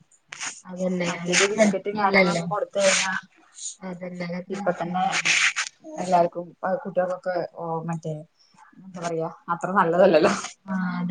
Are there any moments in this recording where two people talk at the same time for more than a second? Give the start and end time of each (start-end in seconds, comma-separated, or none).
1.1-2.4